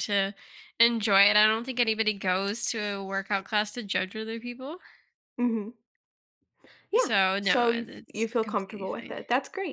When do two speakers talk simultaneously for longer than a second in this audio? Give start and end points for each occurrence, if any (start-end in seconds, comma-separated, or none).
7.0-9.2